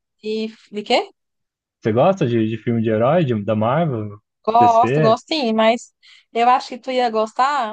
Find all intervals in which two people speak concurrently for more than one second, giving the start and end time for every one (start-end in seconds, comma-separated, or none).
none